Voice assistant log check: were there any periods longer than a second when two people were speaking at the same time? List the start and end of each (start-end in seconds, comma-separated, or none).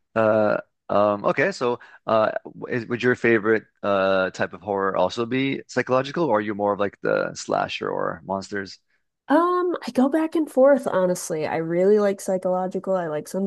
none